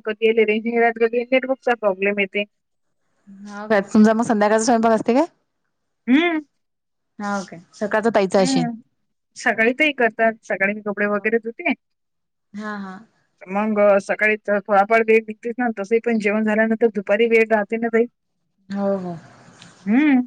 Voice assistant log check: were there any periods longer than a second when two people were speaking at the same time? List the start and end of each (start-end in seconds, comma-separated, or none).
none